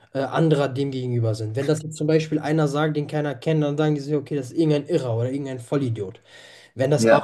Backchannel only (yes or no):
yes